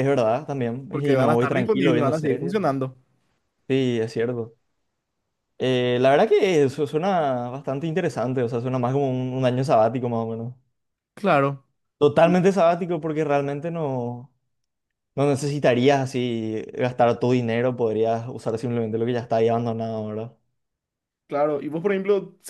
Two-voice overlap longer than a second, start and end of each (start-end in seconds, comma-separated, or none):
0.9-2.5